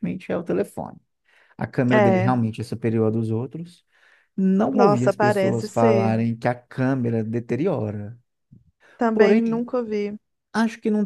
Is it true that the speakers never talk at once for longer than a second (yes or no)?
no